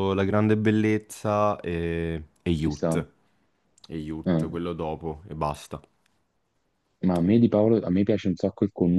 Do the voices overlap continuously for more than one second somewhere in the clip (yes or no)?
no